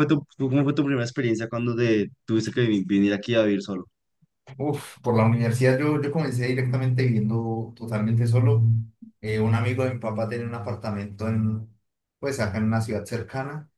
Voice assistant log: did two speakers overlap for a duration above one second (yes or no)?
no